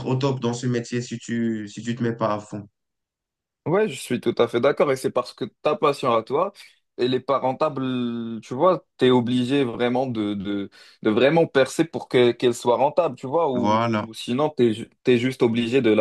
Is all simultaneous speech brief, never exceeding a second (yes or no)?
yes